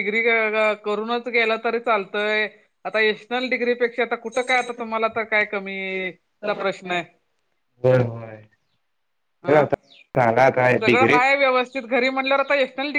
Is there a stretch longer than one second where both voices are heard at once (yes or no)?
no